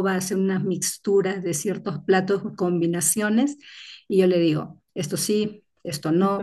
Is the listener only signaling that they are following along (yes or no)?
yes